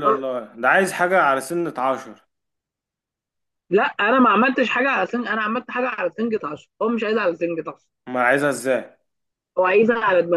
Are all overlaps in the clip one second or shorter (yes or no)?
yes